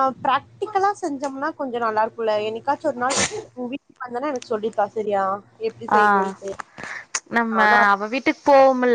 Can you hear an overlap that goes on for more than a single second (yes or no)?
no